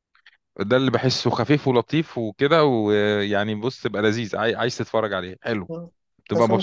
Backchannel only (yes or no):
no